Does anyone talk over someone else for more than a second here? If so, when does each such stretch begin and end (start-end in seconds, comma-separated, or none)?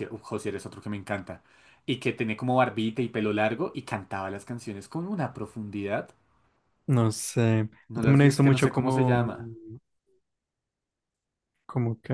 8.0-9.3